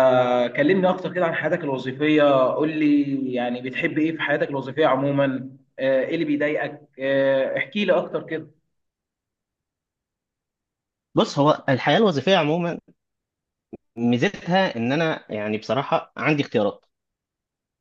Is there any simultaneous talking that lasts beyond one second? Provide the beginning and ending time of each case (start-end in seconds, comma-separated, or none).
none